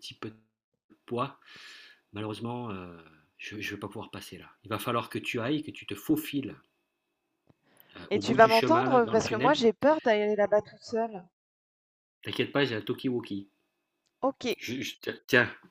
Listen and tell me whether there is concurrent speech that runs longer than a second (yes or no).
yes